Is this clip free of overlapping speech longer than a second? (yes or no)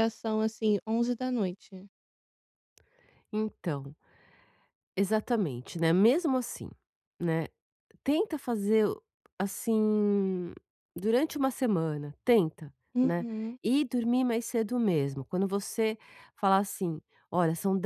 yes